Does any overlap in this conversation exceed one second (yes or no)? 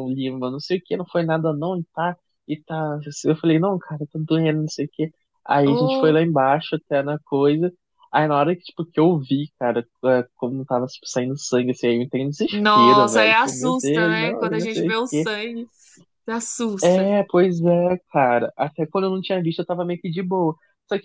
yes